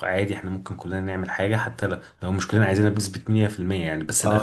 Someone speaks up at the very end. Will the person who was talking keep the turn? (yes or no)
no